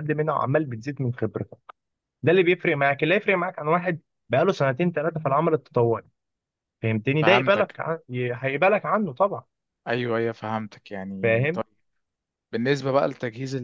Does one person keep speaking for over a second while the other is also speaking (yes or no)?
no